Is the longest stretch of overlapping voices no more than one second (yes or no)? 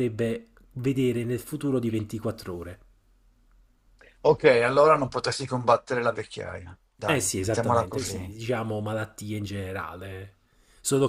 no